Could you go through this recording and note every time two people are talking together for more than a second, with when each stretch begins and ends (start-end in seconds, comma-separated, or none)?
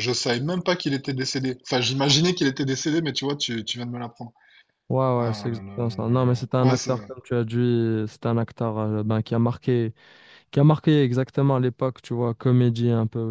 5.2-7.0